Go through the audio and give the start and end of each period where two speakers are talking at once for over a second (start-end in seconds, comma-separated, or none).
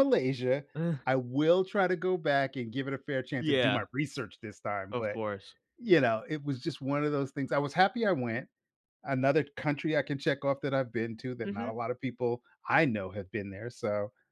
none